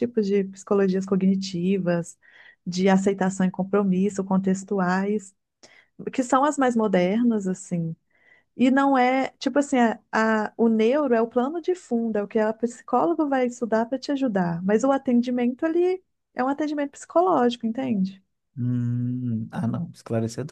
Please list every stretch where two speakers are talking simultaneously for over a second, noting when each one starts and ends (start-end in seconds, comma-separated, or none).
none